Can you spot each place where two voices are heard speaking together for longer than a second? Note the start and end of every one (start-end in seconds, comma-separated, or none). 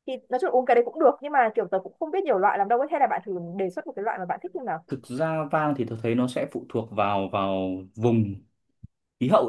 none